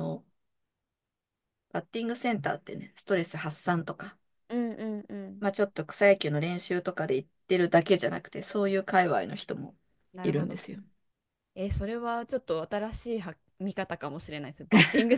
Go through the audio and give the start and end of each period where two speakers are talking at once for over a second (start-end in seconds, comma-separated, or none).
none